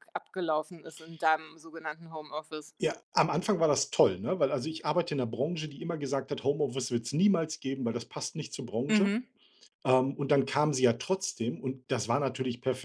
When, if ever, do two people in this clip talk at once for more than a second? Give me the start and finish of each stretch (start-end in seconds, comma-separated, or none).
none